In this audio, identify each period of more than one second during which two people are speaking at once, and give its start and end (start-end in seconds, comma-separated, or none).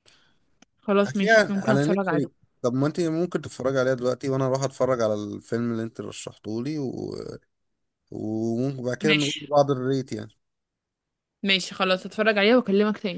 1.0-2.3